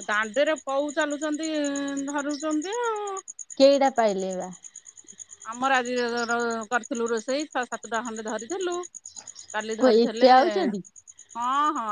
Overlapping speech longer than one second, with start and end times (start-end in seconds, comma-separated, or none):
none